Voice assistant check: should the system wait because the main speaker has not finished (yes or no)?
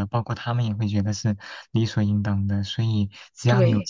yes